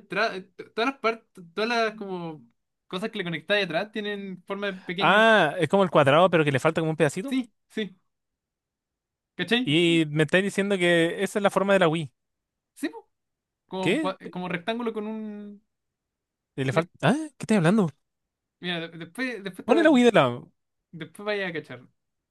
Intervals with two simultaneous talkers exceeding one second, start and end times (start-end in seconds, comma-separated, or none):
none